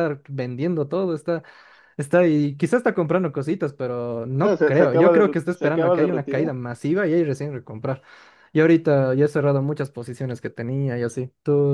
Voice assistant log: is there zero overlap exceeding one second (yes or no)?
no